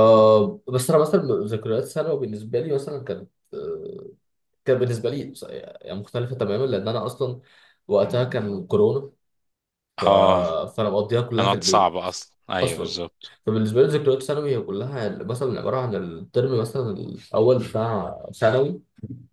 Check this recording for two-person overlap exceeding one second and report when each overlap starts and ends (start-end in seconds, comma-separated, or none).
none